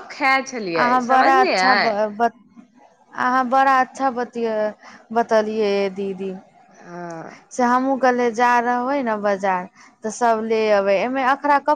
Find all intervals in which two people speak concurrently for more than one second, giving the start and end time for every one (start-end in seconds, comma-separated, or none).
none